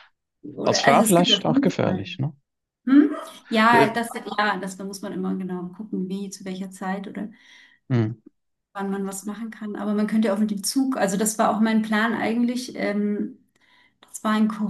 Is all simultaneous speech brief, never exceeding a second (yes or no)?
no